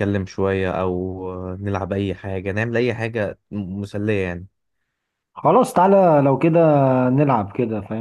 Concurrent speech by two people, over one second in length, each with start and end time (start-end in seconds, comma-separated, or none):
none